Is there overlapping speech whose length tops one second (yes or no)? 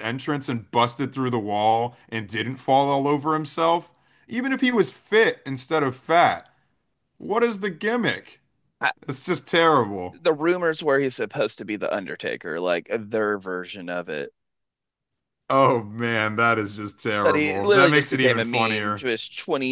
yes